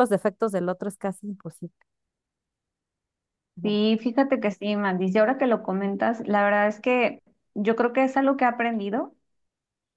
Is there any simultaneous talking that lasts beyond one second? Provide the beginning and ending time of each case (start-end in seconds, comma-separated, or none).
none